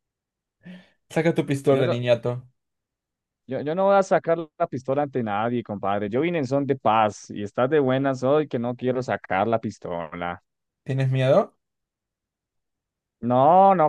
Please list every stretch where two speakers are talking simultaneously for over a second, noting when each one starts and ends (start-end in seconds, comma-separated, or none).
none